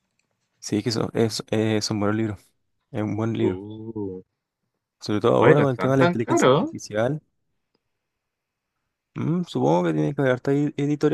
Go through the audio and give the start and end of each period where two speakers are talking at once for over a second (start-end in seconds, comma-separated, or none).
5.4-6.7